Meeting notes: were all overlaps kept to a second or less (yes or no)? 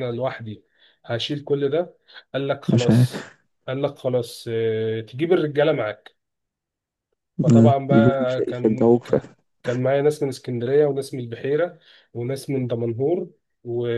no